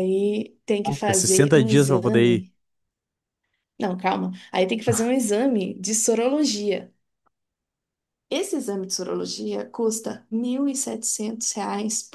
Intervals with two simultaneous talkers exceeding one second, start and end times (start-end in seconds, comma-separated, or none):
0.8-2.5